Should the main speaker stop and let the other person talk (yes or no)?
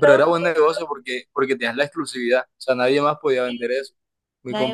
yes